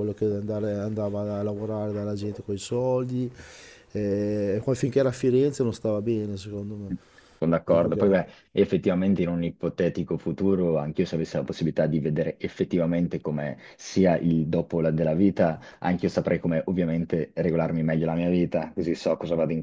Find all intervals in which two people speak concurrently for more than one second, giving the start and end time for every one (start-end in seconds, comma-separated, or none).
none